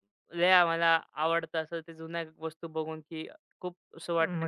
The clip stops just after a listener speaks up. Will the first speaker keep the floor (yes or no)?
no